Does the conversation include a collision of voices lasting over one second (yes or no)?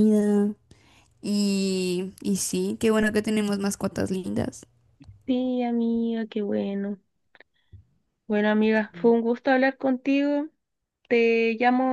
no